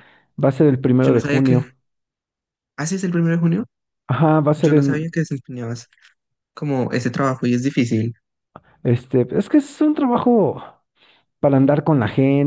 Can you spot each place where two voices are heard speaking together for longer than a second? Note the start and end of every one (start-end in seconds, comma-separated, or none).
none